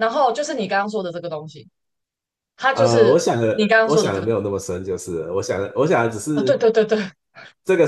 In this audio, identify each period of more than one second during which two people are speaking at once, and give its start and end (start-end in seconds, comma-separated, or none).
2.7-4.5